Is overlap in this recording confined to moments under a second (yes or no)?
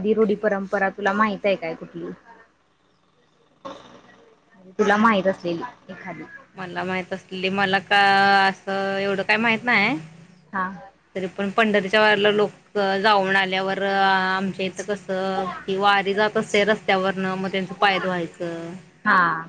yes